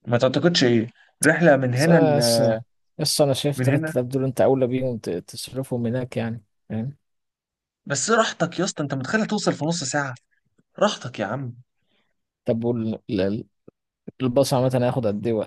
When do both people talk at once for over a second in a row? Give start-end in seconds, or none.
none